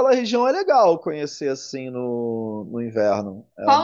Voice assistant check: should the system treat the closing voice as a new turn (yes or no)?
yes